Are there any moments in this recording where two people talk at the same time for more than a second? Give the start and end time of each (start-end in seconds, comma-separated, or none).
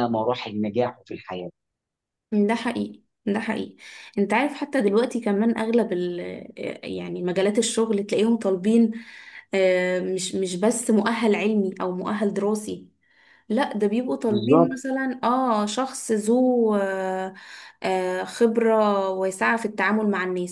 none